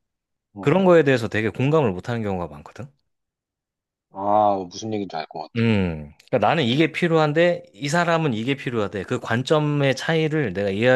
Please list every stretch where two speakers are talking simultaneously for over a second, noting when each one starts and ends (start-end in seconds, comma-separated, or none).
none